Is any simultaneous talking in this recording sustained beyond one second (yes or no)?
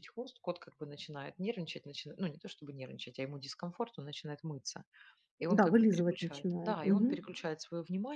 yes